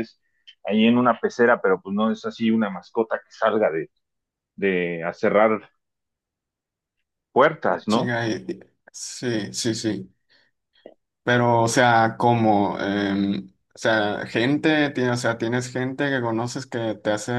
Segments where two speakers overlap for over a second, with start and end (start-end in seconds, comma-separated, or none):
none